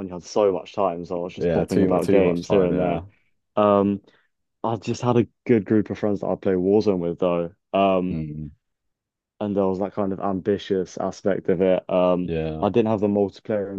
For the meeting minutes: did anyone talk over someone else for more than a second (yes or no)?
yes